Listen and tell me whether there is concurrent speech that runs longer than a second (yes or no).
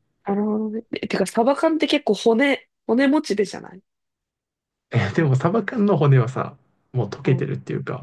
no